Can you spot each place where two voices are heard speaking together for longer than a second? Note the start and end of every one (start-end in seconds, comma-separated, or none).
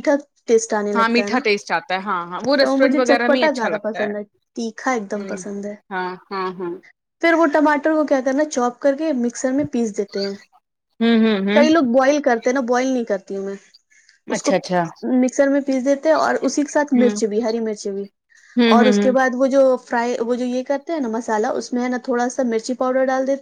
2.6-4.0